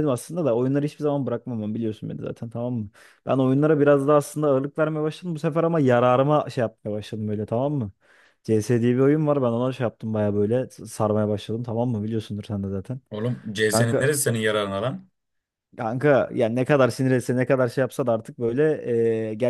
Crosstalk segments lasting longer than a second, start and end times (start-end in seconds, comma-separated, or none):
none